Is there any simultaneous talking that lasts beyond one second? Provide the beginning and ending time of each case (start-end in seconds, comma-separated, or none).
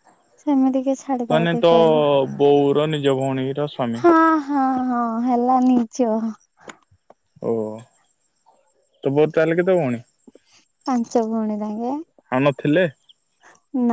none